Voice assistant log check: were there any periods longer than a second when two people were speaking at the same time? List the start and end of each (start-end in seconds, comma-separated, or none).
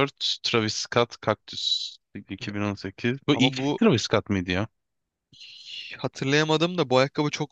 none